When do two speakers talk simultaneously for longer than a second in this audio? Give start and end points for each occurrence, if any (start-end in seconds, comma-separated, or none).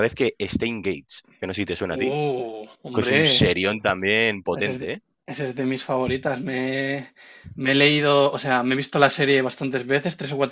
none